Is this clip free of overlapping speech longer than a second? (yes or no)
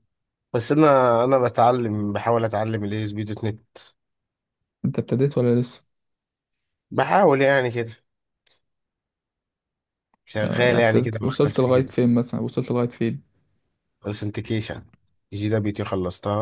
no